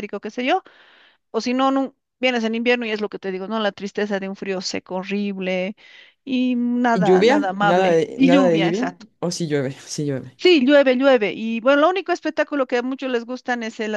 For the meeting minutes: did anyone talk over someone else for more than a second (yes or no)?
yes